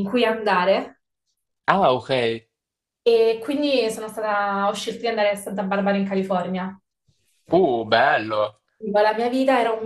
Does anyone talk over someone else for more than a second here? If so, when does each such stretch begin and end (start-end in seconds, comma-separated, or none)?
none